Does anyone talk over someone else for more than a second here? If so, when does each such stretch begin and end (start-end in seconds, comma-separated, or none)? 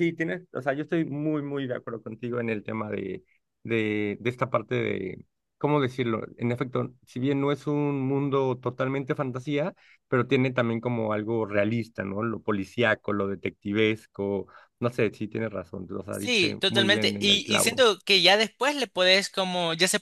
16.1-17.9